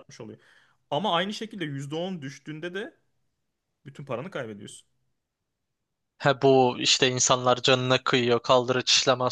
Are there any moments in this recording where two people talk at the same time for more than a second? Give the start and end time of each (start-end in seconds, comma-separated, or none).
none